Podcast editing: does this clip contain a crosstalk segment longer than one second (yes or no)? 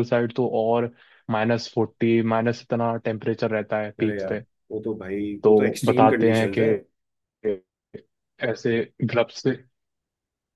yes